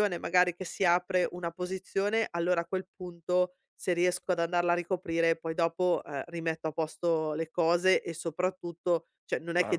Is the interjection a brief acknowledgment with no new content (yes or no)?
yes